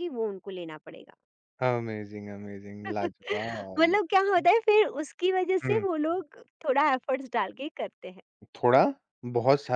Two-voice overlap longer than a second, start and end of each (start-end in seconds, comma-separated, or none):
3.1-4.5